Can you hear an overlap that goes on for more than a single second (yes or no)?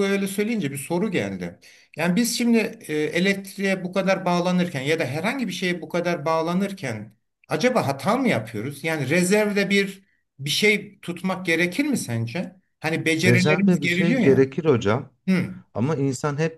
yes